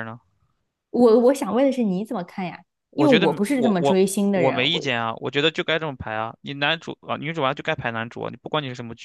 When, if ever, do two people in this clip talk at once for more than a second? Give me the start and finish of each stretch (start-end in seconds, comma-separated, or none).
3.0-4.8